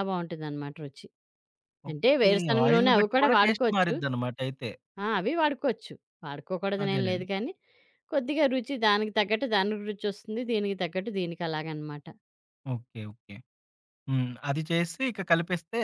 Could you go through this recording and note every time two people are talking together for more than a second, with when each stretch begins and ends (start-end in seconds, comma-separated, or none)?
1.9-3.9